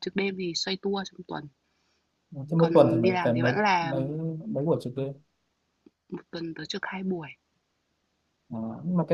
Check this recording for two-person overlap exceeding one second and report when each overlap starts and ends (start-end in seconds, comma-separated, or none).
2.6-4.1